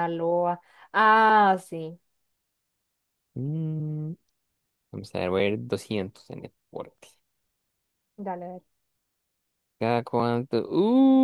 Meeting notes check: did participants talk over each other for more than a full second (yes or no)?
no